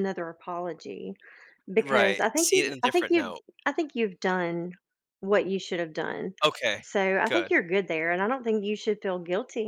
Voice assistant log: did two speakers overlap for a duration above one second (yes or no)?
yes